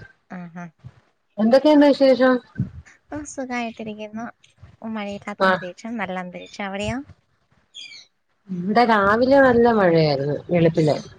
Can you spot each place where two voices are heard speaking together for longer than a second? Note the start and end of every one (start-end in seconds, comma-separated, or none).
none